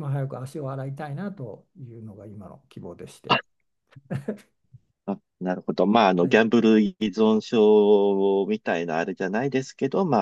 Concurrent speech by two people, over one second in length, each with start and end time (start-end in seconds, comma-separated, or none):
none